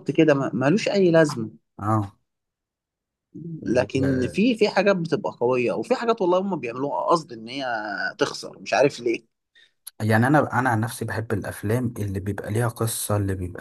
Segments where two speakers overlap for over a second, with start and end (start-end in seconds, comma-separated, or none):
none